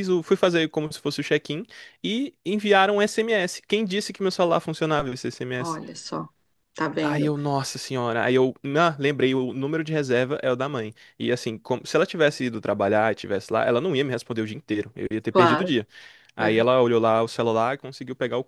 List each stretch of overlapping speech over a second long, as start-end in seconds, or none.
none